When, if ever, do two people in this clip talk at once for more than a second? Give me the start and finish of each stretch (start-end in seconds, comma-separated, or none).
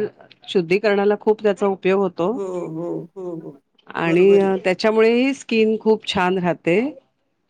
none